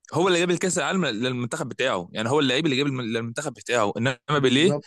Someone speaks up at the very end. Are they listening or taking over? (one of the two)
listening